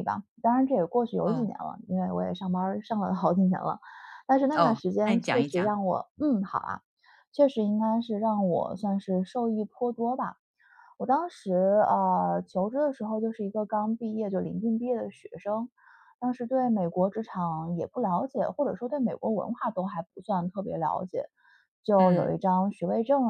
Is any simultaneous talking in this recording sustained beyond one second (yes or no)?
yes